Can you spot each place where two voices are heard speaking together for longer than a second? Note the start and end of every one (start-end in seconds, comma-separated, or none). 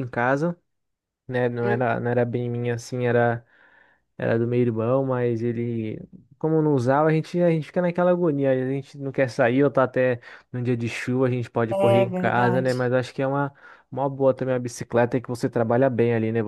11.7-12.9